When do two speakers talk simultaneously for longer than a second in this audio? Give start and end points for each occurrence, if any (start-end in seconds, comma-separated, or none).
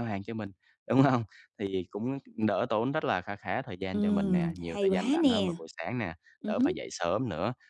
3.9-5.6